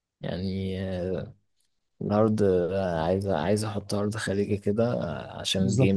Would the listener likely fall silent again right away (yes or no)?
no